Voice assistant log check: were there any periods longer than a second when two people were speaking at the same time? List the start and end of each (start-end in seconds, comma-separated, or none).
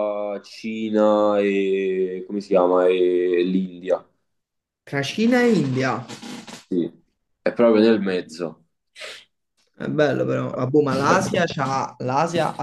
none